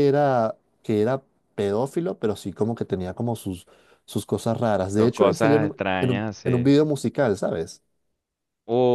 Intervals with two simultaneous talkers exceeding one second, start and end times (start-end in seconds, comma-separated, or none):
5.0-6.7